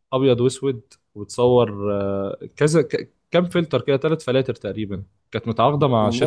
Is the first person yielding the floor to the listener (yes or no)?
no